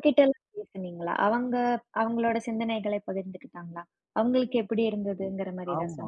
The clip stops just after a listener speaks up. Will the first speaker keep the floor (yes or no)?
no